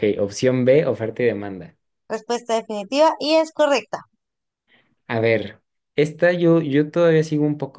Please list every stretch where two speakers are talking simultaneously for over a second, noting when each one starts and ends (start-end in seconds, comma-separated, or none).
none